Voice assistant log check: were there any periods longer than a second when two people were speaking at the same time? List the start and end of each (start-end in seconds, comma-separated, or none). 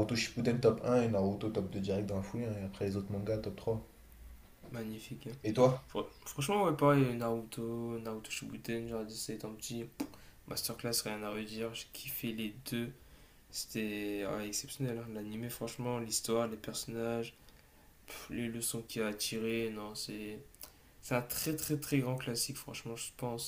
none